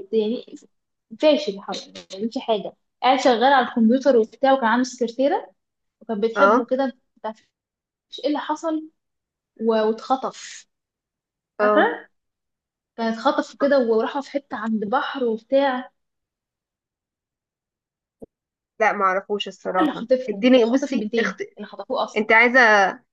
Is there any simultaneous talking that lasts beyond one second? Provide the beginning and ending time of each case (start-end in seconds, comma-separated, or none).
19.8-21.4